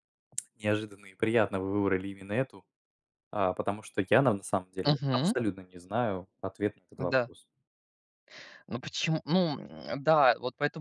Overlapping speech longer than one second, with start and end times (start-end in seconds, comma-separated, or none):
none